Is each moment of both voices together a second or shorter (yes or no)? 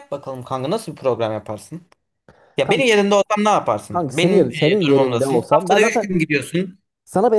no